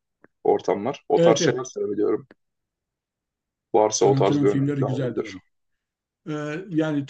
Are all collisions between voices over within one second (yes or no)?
no